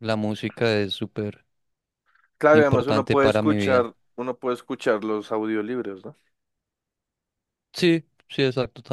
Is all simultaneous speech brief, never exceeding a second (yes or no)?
no